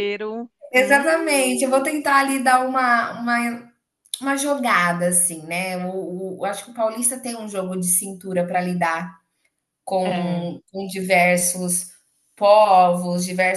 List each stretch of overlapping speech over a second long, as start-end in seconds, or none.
0.7-1.9